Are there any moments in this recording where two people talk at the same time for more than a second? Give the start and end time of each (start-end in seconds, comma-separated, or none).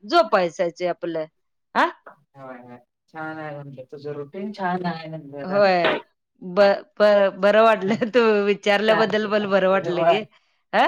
8.9-10.2